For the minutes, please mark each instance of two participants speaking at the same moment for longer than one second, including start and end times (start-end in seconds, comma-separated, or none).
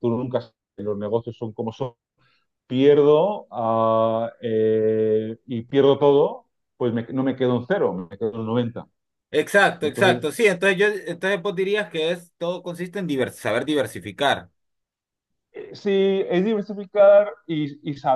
none